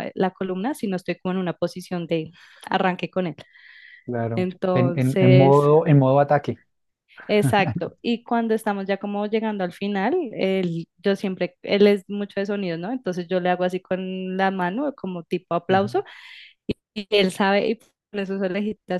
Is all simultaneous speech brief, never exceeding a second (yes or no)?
no